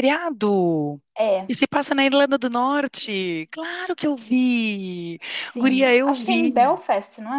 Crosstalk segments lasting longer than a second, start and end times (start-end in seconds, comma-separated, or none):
5.5-6.8